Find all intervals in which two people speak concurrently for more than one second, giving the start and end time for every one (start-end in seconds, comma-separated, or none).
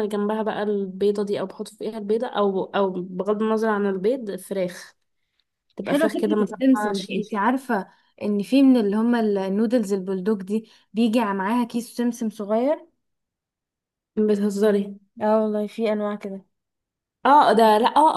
5.8-7.4